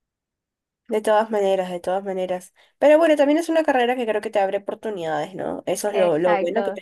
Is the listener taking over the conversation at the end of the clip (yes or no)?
no